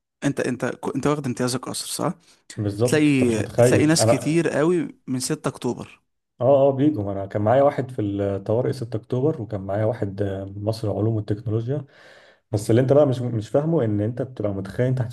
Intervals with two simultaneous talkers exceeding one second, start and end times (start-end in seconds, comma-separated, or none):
2.8-4.5